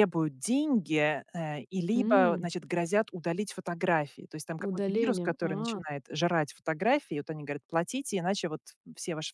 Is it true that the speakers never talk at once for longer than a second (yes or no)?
no